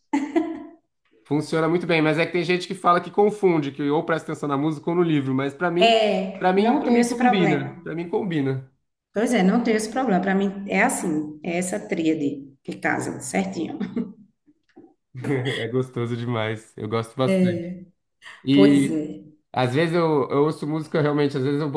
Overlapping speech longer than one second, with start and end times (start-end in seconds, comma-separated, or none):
5.8-7.9